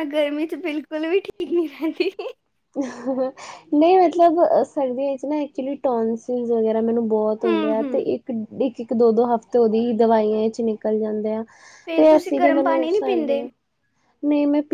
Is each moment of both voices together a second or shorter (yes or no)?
no